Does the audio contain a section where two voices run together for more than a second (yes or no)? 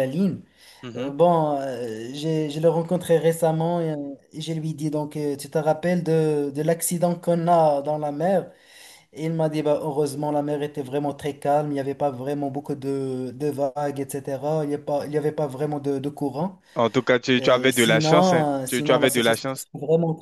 yes